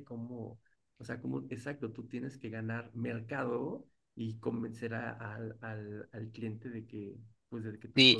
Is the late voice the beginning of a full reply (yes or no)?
yes